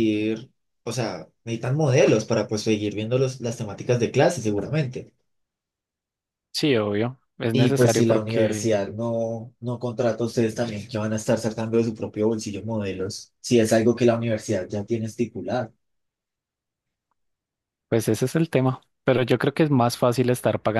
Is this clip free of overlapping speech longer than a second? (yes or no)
no